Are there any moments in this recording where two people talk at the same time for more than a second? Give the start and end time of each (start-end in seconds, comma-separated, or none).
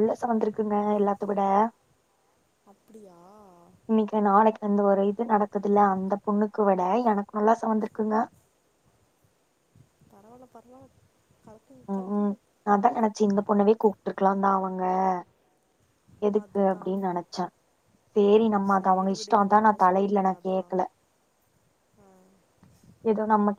18.8-20.7